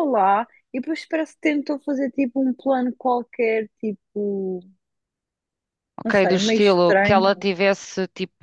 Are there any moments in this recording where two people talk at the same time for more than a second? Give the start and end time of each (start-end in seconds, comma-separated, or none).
6.0-7.5